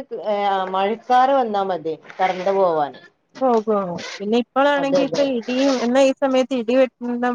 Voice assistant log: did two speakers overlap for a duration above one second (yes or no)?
no